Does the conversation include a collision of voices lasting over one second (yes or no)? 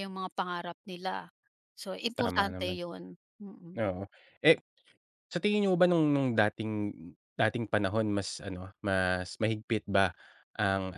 no